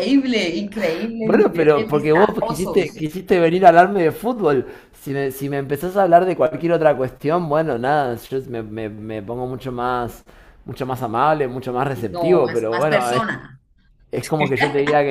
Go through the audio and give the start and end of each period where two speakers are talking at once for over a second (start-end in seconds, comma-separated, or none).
1.2-3.1, 11.9-13.2